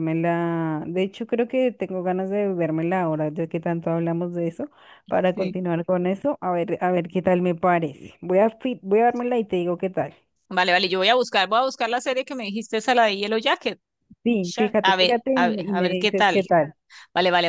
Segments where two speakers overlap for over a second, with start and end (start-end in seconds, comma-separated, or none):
14.4-16.4